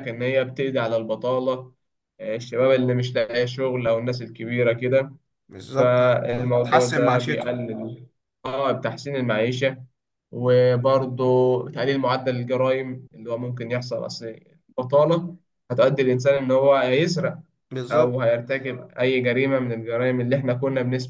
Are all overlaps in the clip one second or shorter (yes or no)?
no